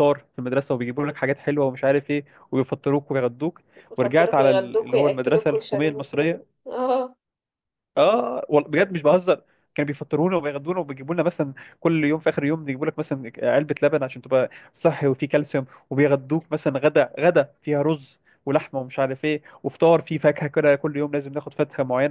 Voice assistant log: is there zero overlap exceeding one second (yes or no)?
no